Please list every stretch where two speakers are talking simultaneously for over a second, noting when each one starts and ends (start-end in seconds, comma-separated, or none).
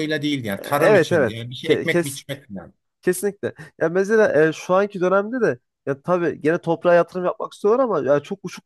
0.6-2.2